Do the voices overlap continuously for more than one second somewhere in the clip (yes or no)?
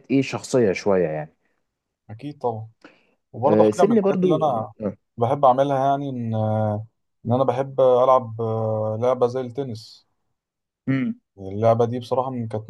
yes